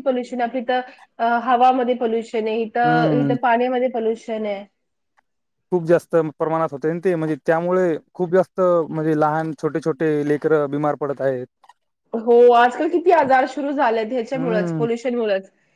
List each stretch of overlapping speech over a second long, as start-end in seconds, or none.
none